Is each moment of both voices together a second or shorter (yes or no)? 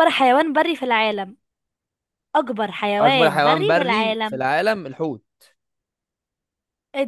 no